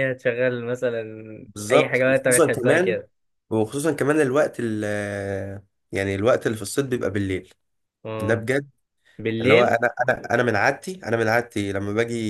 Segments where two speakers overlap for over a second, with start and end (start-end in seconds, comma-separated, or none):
1.7-3.0